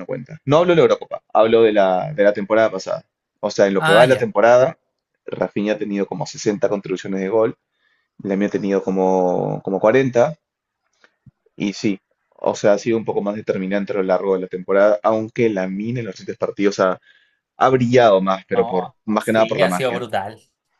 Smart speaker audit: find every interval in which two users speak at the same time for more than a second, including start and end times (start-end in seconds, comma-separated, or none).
18.5-20.0